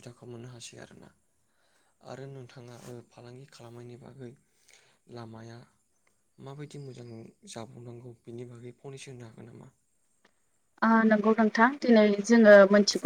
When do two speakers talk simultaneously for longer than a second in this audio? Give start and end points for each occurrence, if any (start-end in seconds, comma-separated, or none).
none